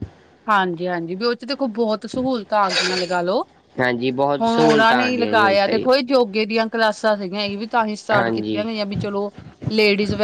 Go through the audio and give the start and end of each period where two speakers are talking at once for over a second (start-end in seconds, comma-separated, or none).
4.4-5.8